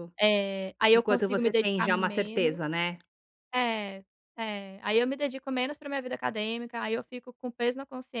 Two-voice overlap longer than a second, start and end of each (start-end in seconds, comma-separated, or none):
0.9-2.6